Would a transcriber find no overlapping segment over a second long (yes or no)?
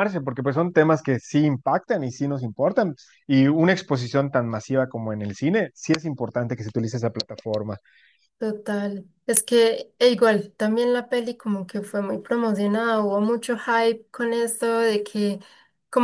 yes